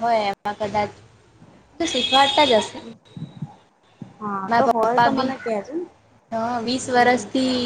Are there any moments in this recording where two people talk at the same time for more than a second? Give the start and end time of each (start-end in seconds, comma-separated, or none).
none